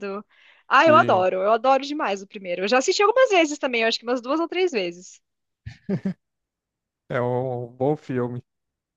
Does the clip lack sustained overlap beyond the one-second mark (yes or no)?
yes